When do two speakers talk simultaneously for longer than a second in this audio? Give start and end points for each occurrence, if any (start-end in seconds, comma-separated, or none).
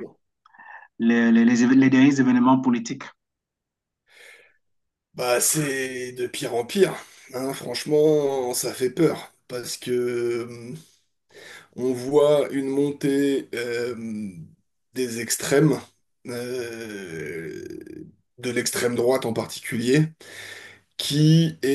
none